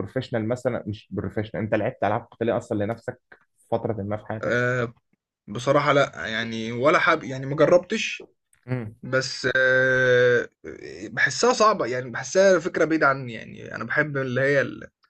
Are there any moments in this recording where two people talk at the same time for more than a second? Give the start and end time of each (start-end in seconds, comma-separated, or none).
none